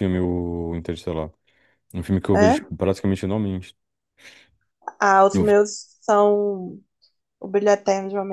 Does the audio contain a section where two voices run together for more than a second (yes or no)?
no